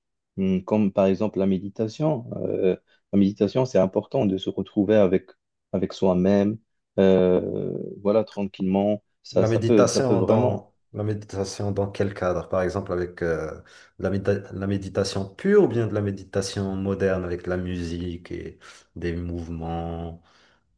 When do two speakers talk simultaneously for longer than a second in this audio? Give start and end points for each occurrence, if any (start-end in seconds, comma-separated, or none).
9.3-10.7